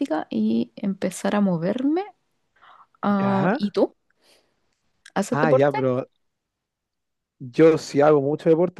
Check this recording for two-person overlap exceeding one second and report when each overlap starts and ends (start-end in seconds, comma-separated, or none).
none